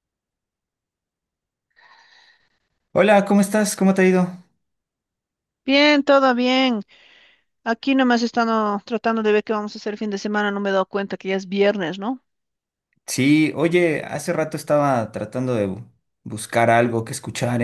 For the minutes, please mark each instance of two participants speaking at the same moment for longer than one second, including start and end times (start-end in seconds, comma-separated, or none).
none